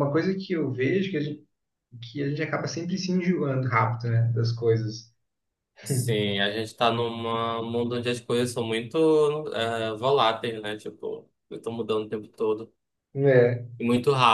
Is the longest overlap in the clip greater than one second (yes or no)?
no